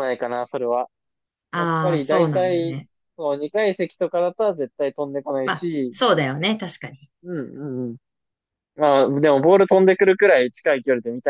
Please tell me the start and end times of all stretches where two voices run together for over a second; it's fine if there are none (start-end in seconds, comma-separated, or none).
1.5-2.7